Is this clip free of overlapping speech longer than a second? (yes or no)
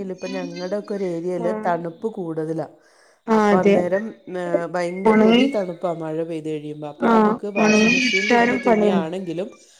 no